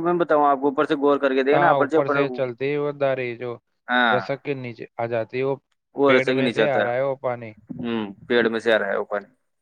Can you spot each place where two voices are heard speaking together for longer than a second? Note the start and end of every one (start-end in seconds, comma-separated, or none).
6.0-7.5